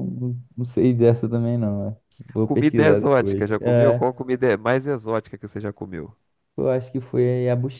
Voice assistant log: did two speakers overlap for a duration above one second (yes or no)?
yes